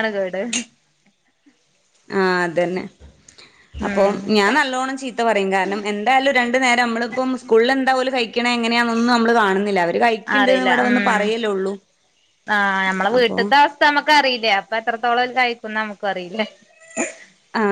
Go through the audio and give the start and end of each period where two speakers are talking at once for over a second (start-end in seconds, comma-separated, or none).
none